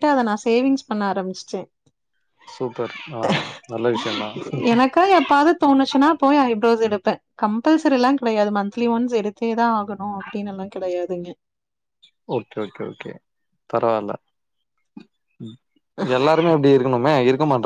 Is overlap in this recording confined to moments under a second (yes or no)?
yes